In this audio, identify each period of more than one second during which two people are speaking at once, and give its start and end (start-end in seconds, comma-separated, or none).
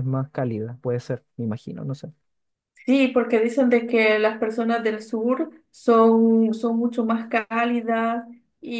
none